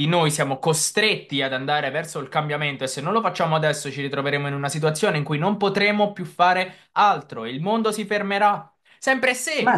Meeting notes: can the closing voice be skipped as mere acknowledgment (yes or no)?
no